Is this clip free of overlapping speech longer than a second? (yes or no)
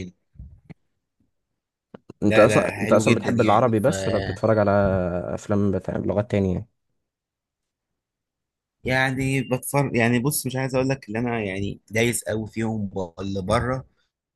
no